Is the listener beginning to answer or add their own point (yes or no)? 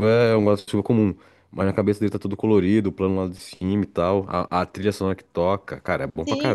yes